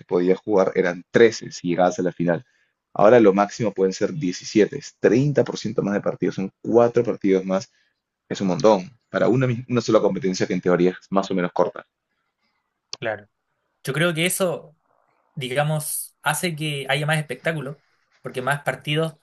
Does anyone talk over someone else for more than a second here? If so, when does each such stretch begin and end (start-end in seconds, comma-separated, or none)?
none